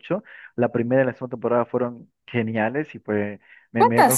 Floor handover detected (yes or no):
no